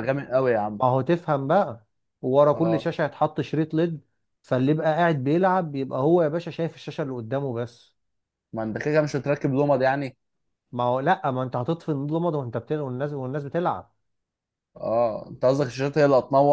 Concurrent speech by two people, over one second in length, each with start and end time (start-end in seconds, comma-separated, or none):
none